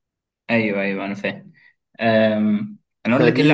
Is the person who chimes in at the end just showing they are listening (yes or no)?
yes